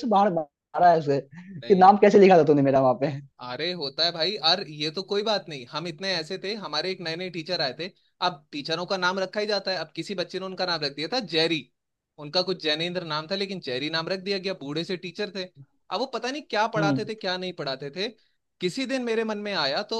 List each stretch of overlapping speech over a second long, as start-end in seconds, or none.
none